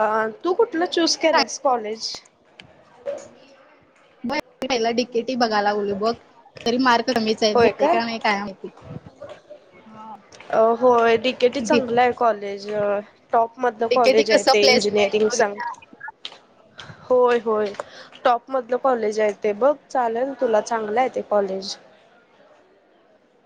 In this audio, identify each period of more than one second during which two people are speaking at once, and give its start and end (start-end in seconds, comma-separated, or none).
13.9-15.6